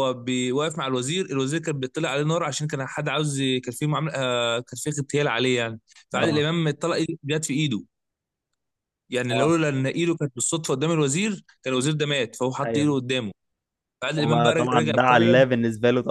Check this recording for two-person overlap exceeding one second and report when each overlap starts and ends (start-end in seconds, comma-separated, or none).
14.2-15.4